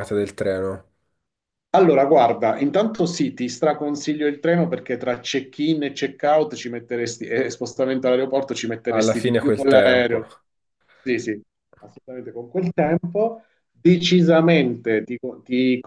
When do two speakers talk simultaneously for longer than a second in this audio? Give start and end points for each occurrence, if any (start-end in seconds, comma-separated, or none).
8.8-10.2